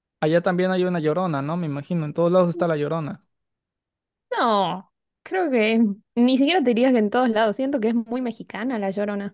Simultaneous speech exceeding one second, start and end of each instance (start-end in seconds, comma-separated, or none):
none